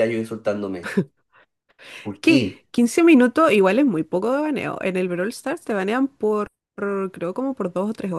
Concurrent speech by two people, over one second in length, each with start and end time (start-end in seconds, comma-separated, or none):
none